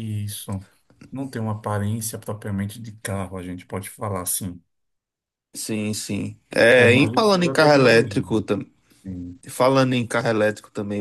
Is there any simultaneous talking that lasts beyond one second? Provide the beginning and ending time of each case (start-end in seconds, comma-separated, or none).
6.7-8.2